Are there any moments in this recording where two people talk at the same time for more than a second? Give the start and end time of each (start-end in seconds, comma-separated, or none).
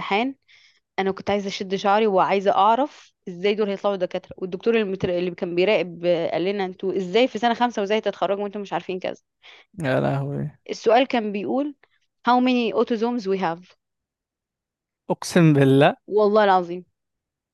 none